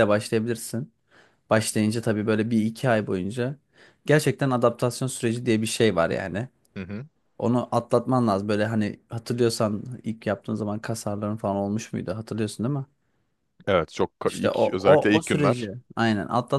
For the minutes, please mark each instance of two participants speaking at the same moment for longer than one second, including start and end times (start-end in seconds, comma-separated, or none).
14.2-15.7